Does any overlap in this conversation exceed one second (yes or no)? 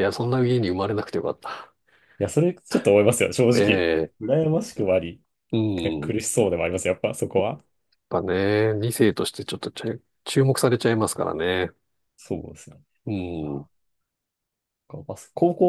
no